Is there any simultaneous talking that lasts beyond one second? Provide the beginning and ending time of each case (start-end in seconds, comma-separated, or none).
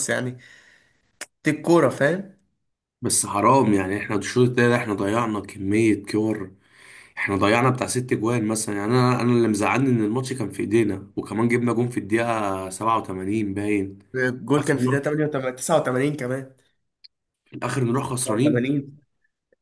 none